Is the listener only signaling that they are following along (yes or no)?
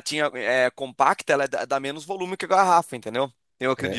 no